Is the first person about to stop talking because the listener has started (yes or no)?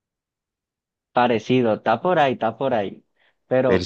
no